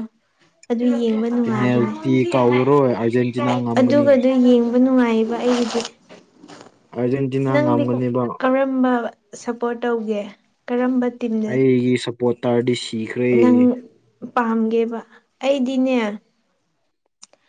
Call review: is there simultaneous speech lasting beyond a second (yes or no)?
no